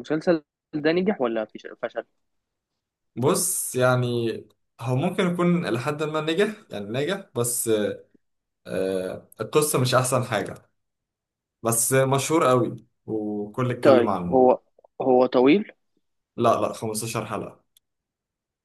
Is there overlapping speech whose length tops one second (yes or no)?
no